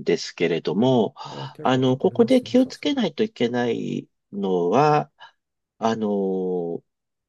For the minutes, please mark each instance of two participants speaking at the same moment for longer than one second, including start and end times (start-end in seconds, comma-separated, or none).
1.6-3.0